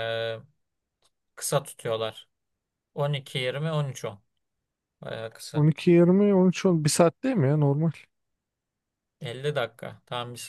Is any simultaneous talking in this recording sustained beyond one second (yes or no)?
no